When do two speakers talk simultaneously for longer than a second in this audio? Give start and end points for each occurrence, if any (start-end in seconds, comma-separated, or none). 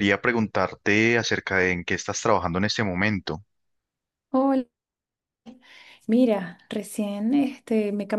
none